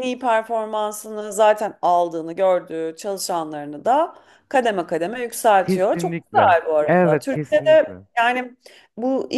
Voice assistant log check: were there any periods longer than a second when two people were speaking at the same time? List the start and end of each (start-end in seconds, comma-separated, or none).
5.6-8.0